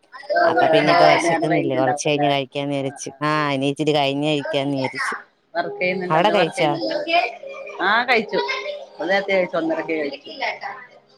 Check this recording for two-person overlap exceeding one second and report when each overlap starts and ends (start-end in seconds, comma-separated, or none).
1.2-3.0